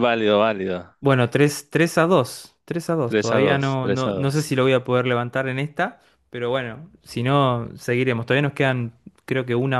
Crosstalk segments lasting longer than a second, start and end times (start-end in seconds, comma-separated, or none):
3.0-4.5